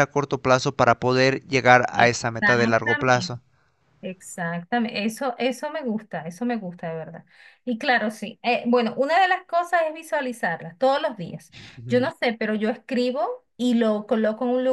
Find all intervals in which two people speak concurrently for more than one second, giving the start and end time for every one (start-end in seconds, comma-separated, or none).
1.9-3.4